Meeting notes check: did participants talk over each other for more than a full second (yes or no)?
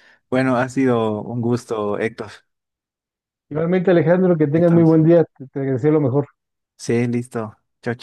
no